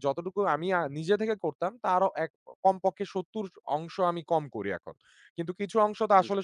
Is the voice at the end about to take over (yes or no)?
yes